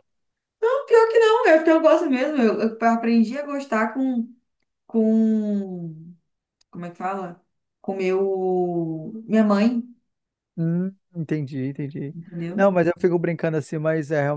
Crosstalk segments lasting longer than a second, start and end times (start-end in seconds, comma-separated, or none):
none